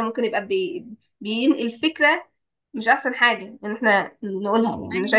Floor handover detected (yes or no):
no